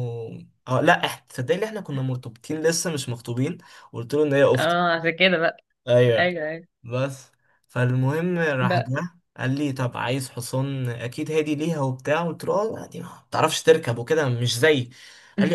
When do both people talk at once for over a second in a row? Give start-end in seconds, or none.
none